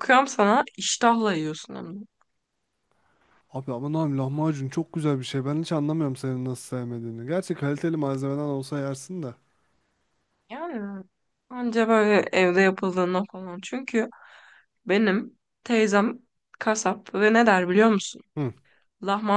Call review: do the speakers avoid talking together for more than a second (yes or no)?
yes